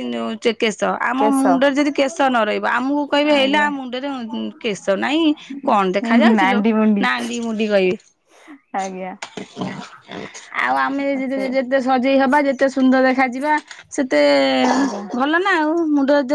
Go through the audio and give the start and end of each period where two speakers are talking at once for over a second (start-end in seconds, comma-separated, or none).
none